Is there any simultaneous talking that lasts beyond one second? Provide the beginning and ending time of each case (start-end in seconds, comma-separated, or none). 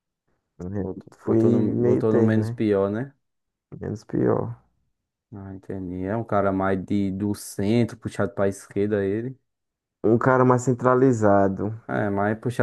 0.8-2.6